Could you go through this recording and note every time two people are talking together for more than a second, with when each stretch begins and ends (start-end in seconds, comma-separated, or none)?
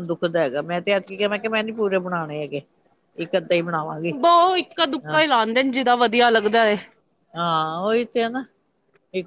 none